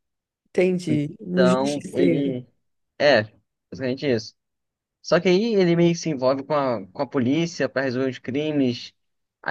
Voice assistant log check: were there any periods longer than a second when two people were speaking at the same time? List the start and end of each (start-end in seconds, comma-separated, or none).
0.9-2.4